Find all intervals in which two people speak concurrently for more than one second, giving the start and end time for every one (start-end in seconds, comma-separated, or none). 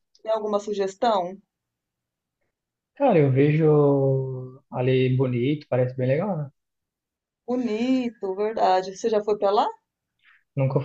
none